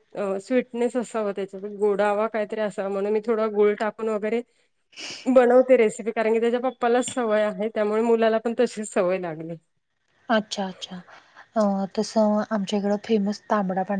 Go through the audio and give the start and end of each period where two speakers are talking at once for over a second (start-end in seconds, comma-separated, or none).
none